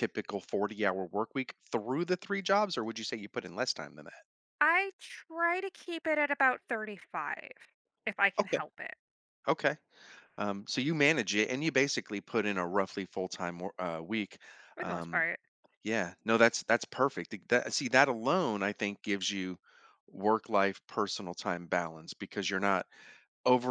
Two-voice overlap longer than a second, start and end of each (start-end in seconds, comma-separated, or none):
none